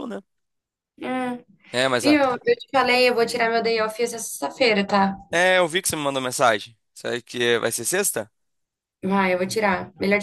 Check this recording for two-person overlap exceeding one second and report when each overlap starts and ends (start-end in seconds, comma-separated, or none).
none